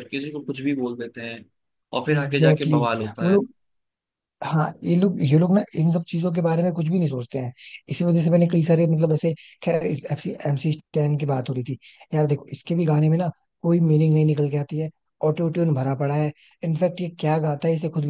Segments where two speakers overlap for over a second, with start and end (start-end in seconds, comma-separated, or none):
2.2-3.4